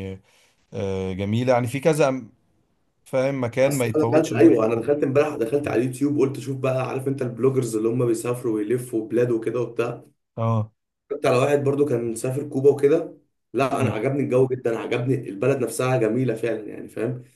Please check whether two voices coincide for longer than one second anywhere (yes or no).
yes